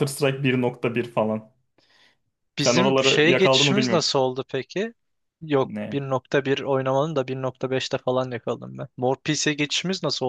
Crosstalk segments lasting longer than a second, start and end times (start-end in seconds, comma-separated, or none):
2.6-4.1